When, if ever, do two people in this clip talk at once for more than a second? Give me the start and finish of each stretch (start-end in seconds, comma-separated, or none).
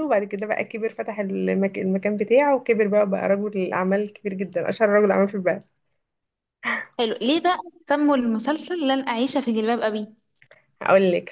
none